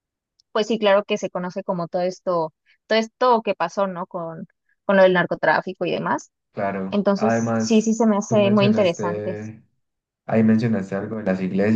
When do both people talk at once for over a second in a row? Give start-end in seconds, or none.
6.9-9.4